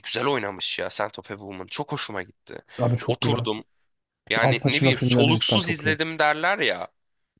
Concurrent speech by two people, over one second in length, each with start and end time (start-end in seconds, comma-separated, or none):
4.4-6.0